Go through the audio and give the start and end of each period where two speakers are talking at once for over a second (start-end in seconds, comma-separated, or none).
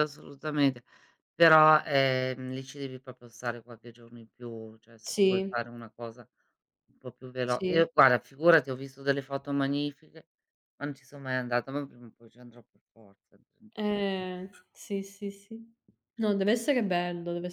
none